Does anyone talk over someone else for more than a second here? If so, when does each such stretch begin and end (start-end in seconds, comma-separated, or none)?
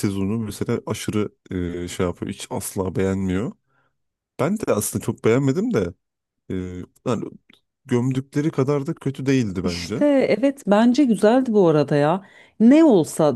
none